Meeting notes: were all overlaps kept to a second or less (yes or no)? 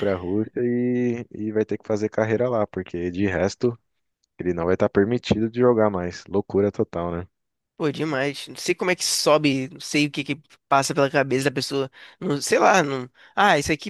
yes